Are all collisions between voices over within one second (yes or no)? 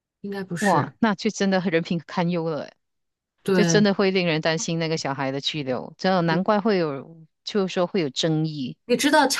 yes